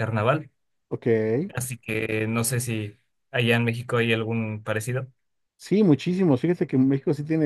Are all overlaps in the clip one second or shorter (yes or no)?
yes